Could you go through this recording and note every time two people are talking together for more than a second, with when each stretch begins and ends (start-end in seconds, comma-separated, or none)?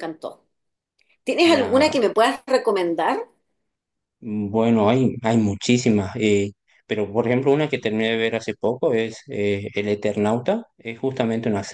none